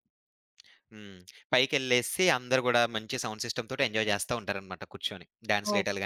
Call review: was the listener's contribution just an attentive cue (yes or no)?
yes